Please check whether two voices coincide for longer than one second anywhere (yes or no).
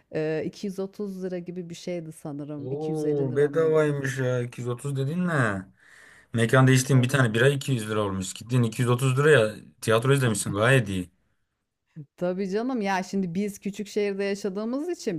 yes